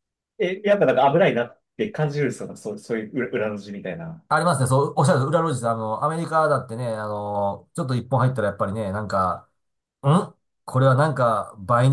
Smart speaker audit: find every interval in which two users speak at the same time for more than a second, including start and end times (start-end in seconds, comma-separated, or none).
none